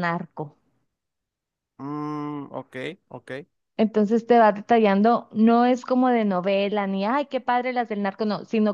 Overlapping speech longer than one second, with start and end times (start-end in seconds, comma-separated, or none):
none